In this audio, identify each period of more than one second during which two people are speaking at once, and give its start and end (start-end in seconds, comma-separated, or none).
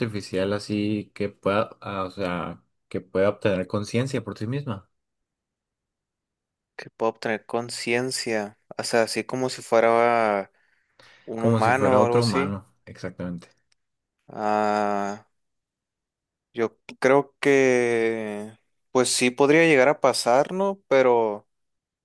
11.4-12.6